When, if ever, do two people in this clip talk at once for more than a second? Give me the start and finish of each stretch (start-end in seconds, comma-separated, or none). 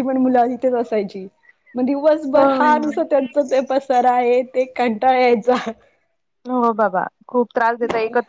none